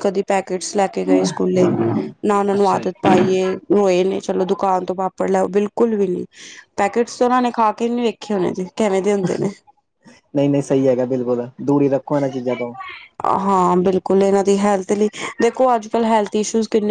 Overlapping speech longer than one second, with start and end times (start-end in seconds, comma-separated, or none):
none